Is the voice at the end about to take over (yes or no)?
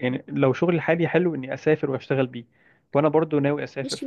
yes